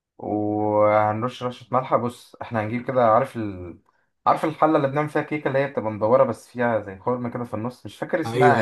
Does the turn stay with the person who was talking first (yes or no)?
no